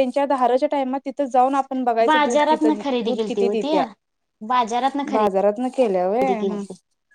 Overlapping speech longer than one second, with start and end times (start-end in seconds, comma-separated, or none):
2.1-3.7